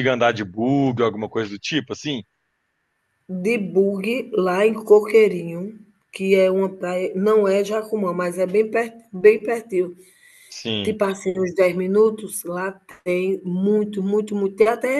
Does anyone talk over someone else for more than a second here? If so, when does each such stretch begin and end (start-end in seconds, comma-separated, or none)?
none